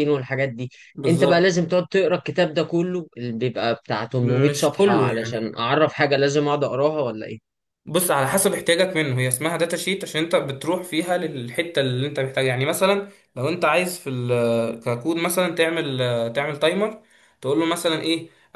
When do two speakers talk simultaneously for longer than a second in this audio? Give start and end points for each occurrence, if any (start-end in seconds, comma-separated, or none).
4.2-5.6